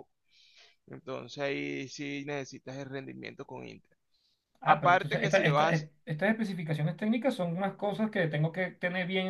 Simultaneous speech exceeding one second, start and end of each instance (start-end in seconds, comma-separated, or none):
4.6-6.0